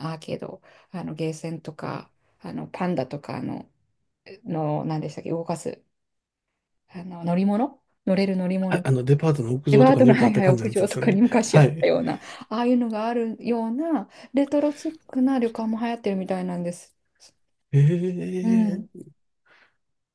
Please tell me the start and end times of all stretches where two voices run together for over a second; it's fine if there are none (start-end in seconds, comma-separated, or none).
9.7-11.9